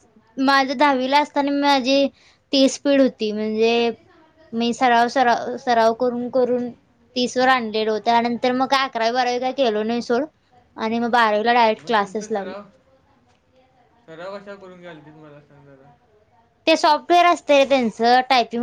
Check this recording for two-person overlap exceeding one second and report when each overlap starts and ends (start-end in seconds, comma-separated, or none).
none